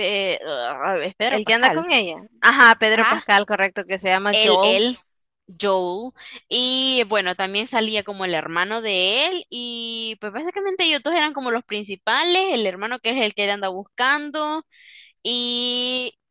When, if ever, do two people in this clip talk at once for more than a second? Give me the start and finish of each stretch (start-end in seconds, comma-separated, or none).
none